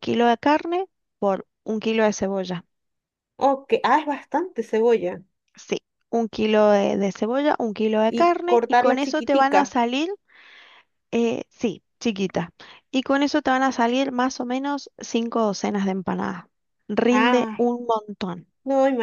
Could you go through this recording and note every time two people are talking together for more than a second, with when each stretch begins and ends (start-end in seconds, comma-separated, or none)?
8.1-9.8